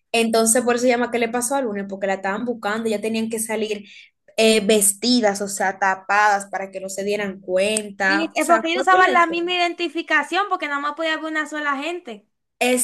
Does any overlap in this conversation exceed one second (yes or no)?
yes